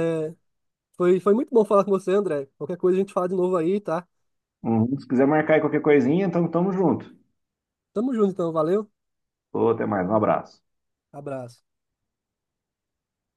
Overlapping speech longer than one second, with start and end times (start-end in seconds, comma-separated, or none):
none